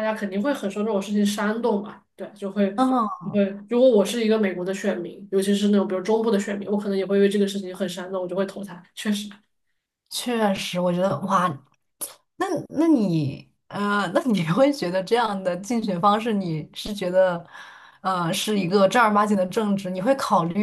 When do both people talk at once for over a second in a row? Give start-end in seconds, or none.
none